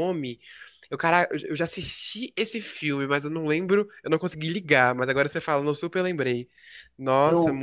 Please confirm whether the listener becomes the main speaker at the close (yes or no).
yes